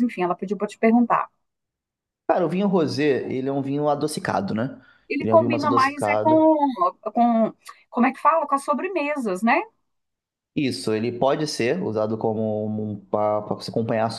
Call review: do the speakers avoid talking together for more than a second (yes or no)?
no